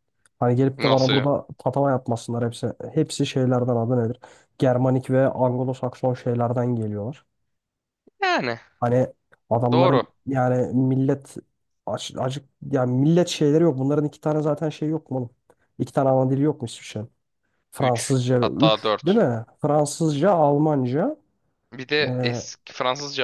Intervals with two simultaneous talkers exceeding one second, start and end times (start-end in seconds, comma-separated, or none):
17.8-19.3